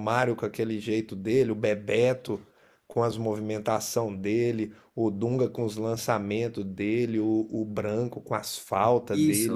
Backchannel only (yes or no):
no